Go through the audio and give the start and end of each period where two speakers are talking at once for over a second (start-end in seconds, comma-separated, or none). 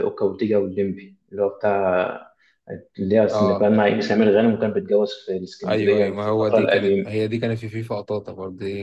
5.6-7.1